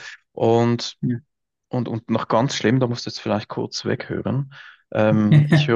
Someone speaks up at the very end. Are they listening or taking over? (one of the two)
listening